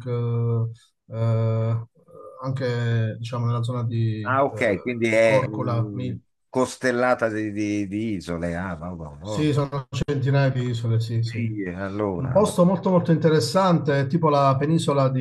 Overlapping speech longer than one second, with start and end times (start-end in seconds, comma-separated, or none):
4.2-6.2